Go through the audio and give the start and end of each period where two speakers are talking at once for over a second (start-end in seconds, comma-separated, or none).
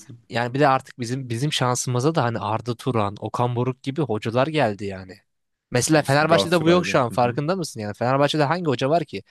5.9-7.4